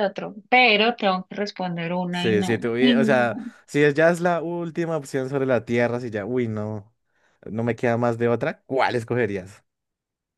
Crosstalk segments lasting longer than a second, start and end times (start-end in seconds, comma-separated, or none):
2.1-3.5